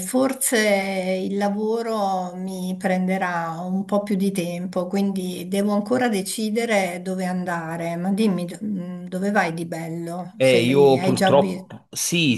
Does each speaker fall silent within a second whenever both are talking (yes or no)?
no